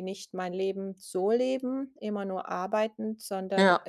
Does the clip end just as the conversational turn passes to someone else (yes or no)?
no